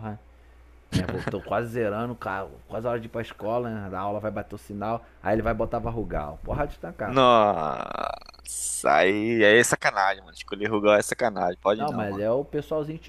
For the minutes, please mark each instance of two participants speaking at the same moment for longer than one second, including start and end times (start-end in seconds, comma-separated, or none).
none